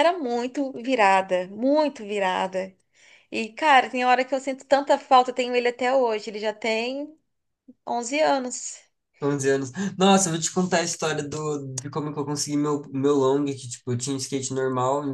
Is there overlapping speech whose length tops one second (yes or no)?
no